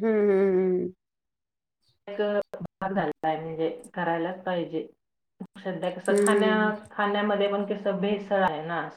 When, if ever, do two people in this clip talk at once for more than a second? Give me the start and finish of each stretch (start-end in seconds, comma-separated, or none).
none